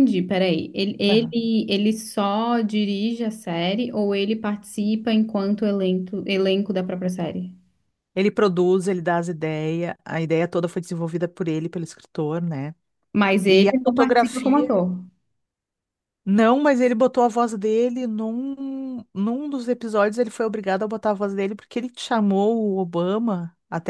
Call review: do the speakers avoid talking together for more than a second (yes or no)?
no